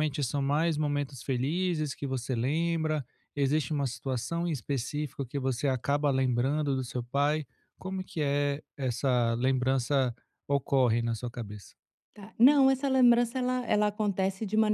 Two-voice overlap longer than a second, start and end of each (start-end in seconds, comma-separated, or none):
none